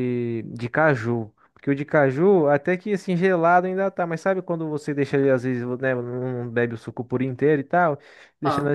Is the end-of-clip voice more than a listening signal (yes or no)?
no